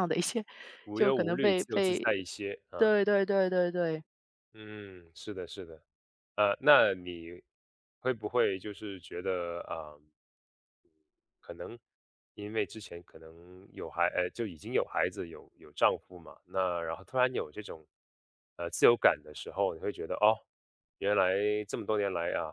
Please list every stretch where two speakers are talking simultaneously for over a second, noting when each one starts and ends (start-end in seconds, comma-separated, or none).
0.9-2.2